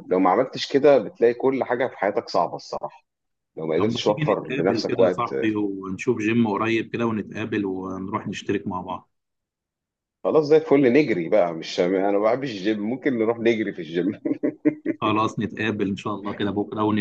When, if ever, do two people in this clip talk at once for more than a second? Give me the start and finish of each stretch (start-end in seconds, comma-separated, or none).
3.8-5.3